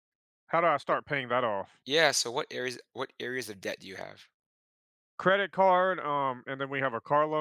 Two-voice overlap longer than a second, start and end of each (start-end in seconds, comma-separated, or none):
none